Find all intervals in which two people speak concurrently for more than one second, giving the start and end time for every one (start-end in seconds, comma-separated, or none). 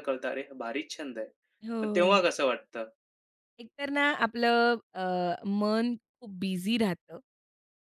none